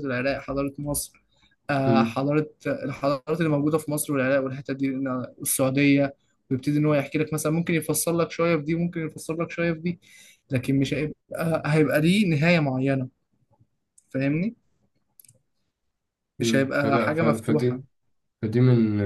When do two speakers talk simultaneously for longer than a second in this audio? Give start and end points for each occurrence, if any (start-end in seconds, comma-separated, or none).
16.4-17.8